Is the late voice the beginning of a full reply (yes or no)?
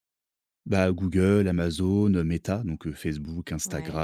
no